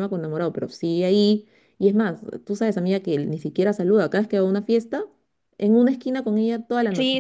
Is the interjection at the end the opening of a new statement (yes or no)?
yes